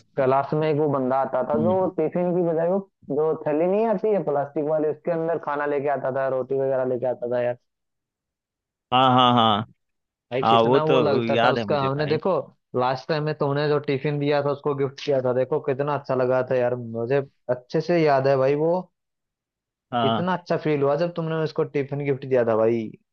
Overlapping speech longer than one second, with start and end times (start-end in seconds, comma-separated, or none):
10.4-12.2